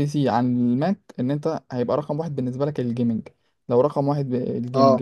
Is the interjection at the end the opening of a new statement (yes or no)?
no